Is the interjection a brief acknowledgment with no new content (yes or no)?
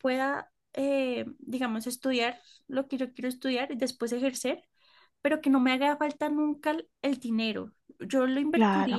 yes